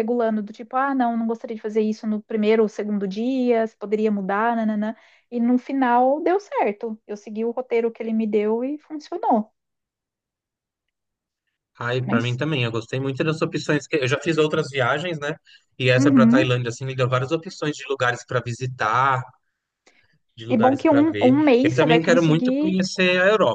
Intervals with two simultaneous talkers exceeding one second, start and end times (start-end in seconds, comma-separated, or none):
20.5-22.8